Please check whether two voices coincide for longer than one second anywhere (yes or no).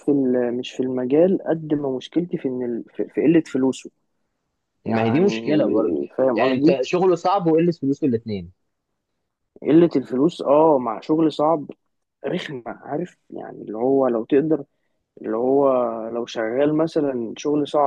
yes